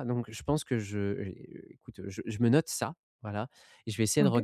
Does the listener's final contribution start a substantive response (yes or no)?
no